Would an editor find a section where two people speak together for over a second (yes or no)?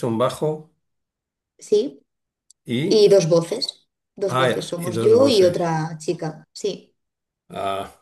yes